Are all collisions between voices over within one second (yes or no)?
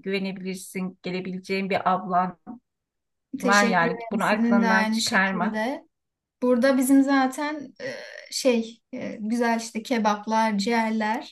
no